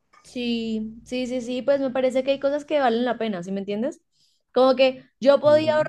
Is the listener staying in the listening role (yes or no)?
yes